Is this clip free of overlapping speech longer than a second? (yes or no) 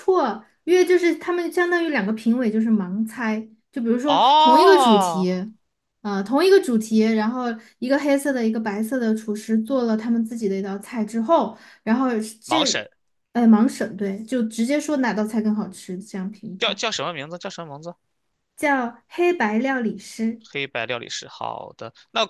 no